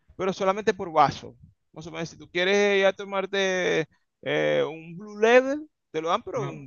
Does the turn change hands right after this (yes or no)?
no